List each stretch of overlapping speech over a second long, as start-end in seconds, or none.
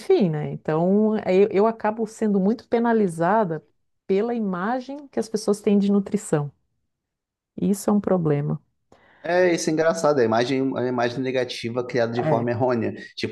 none